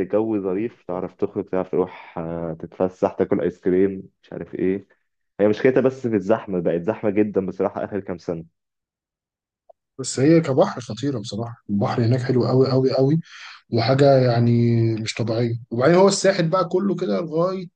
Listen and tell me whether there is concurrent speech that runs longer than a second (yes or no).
no